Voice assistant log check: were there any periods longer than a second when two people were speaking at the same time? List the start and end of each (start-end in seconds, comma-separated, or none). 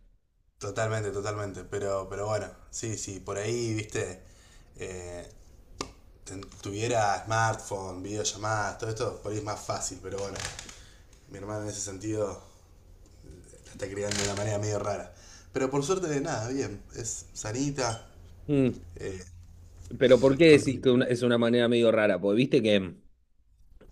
none